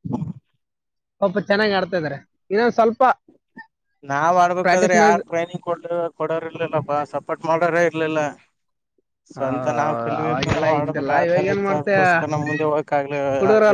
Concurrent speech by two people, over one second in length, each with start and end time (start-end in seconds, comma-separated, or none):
10.2-11.9